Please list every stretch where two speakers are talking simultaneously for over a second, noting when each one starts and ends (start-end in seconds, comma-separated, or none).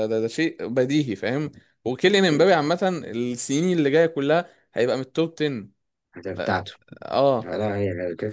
none